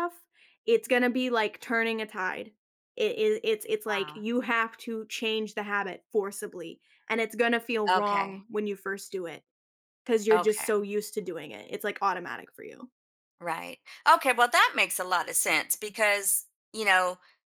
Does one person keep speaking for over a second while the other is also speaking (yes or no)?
no